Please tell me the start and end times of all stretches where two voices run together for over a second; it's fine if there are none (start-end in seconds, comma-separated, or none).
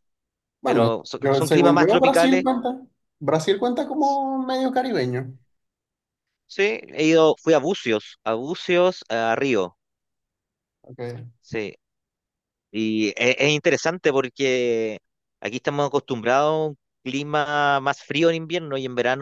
0.6-2.4